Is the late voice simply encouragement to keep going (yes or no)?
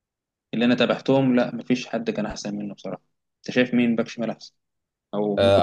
no